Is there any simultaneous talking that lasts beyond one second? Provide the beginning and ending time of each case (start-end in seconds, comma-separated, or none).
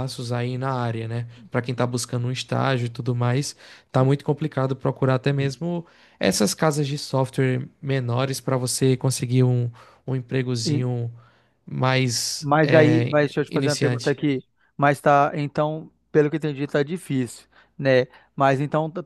12.4-14.2